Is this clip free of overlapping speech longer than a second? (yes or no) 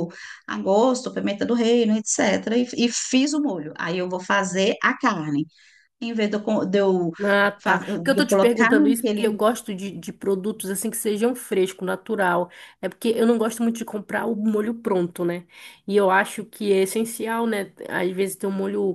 no